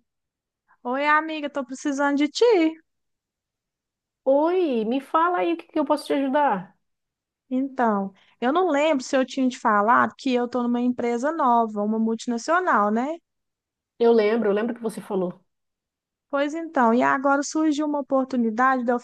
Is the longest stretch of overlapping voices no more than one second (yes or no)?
yes